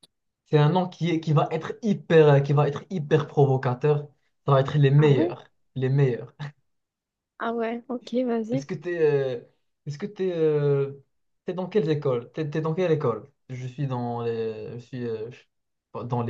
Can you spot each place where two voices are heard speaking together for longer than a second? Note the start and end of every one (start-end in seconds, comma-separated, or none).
none